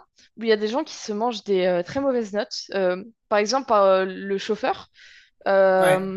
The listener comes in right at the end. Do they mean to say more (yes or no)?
no